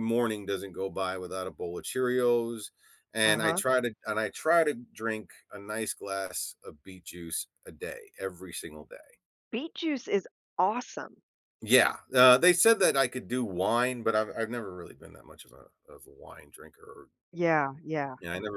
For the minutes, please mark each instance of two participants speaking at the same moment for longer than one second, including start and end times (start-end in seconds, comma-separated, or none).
none